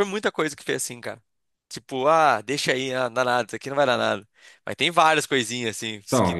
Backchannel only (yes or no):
no